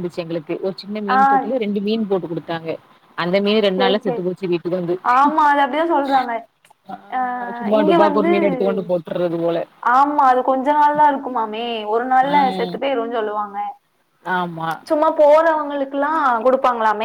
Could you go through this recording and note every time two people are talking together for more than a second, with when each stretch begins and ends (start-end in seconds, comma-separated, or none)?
7.2-8.7